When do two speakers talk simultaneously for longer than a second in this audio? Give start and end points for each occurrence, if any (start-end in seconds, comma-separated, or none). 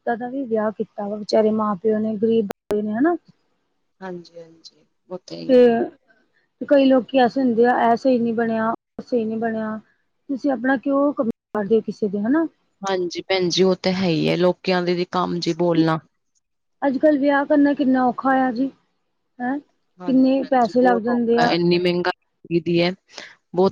20.0-21.5